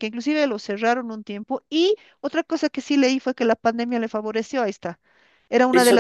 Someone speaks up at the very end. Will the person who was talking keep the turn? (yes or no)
no